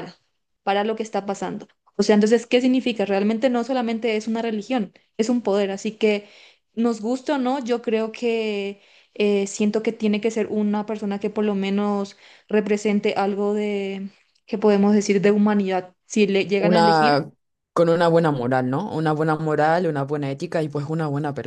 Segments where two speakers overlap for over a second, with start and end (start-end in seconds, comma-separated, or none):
none